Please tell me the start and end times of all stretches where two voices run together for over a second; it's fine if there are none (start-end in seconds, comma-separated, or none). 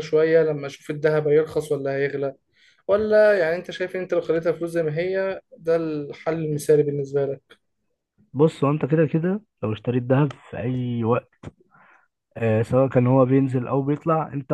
none